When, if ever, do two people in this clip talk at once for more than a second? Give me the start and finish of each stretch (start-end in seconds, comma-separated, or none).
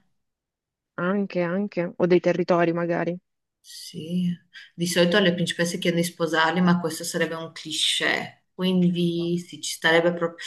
none